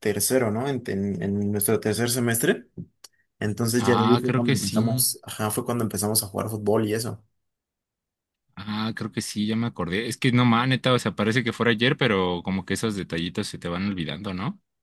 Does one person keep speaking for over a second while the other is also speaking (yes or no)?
yes